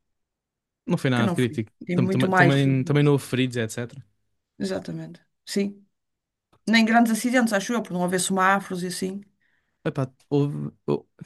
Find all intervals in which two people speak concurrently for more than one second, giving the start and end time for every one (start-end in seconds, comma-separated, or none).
1.1-2.5